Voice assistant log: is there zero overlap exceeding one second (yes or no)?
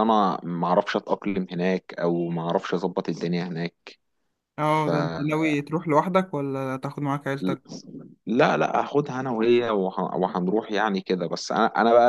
yes